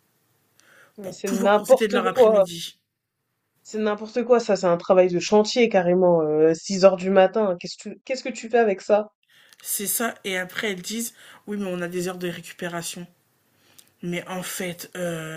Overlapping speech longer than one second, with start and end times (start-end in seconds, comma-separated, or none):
1.0-2.5